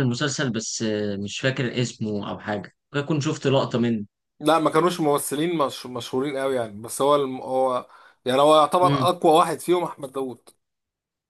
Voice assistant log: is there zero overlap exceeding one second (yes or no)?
yes